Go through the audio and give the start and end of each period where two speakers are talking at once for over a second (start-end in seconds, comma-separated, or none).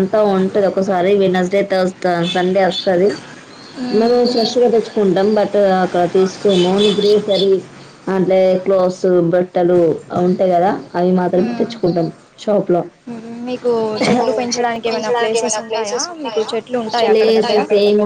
14.5-17.4